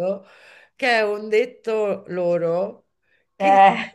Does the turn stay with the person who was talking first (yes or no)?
yes